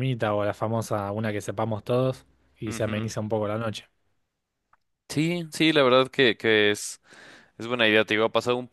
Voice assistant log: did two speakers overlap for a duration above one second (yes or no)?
no